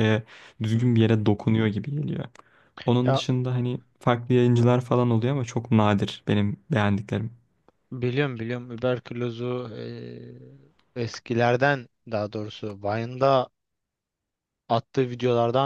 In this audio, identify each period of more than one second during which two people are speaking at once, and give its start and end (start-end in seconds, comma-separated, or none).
none